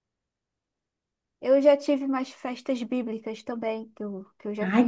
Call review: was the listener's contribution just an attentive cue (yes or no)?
no